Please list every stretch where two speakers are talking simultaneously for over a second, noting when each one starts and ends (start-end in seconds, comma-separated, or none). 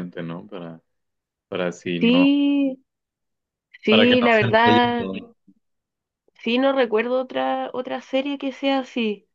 3.9-5.1